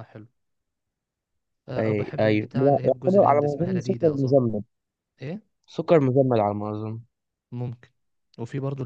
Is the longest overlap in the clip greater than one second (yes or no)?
yes